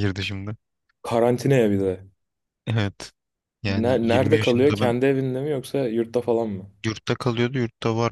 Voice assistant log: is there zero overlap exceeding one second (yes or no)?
no